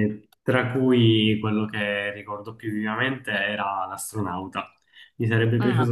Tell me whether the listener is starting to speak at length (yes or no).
no